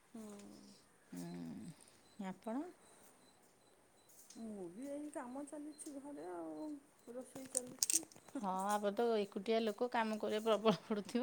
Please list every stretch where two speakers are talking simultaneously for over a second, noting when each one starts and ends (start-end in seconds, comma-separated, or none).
none